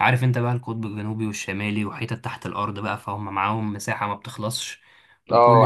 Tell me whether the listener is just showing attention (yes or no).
no